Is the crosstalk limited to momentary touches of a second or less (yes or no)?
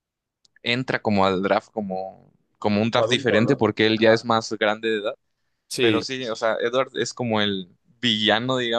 no